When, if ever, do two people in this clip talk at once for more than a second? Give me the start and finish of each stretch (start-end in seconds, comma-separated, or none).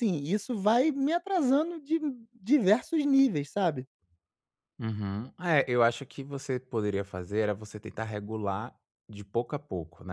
none